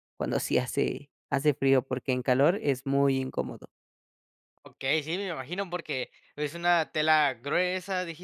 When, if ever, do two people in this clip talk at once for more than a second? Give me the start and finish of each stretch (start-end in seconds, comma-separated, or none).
none